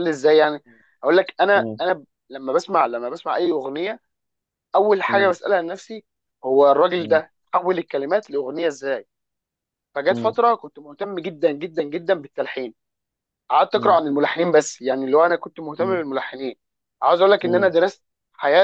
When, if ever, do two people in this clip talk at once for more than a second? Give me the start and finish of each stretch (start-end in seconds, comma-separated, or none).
none